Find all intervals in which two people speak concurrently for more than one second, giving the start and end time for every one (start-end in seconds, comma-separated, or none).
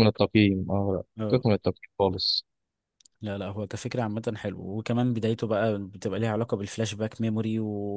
none